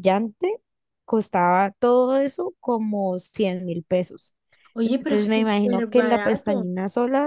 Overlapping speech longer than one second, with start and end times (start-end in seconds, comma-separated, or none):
4.8-6.7